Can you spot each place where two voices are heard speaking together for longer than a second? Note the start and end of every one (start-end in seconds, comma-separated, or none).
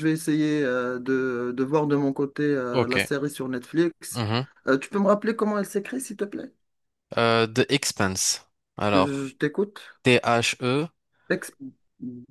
none